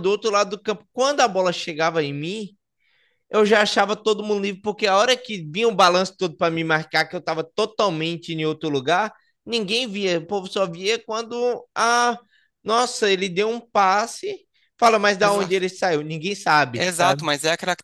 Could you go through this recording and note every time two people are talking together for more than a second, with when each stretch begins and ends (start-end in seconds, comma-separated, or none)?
none